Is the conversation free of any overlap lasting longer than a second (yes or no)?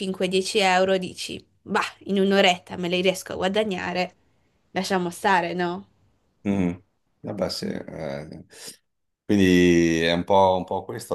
yes